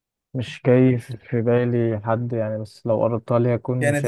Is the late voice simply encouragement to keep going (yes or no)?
no